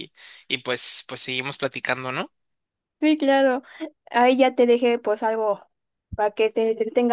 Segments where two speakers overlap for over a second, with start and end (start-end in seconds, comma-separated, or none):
none